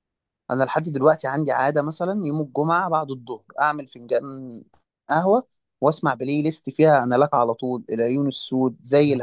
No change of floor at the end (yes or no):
yes